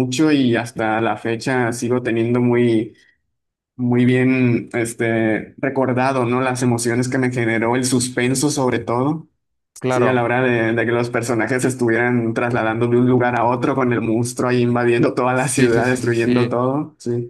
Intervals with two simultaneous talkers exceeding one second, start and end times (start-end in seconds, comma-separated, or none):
15.3-16.6